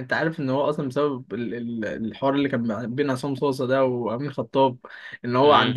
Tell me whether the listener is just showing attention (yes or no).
yes